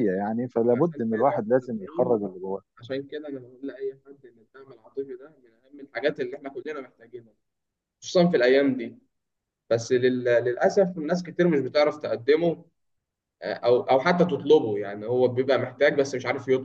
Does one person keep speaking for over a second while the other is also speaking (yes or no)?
yes